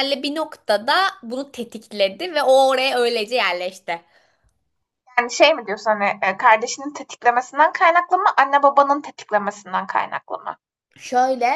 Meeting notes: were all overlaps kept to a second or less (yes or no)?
yes